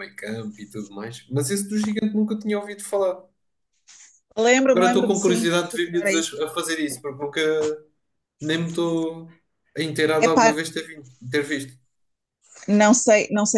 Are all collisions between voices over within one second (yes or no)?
no